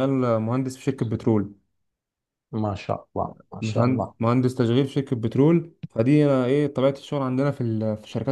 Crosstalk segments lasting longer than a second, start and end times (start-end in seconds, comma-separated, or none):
none